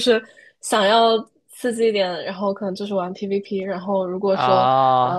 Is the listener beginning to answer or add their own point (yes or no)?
no